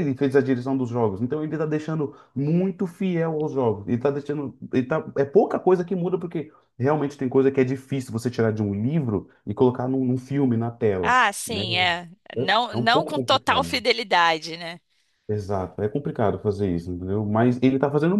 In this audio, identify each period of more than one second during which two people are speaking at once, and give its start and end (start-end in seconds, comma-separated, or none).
12.4-13.8